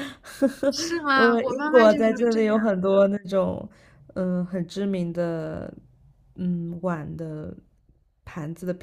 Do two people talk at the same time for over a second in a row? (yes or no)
yes